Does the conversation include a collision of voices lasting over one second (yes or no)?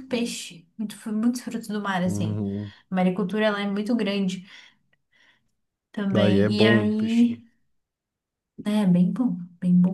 yes